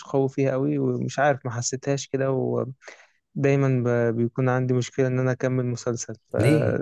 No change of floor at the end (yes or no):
yes